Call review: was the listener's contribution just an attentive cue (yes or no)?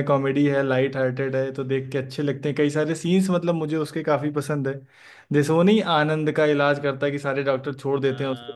no